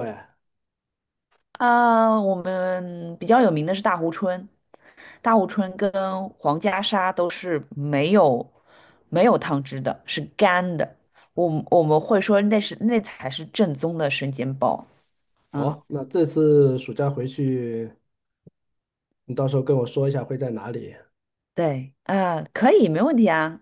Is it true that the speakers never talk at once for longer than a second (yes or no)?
yes